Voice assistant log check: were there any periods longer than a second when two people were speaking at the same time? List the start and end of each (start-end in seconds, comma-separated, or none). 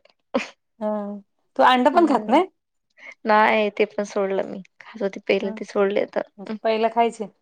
none